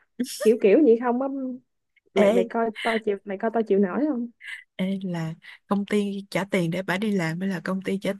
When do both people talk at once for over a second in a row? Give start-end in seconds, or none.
none